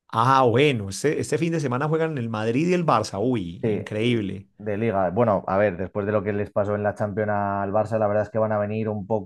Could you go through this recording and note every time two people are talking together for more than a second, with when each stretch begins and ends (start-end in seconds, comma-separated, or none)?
none